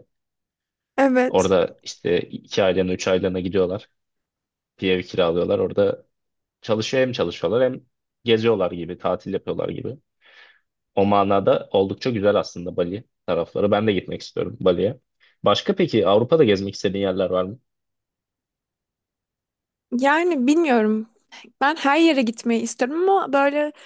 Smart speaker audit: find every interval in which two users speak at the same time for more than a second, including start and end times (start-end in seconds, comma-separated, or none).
none